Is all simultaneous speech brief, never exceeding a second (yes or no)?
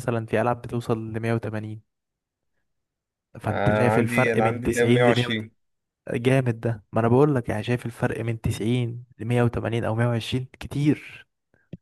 no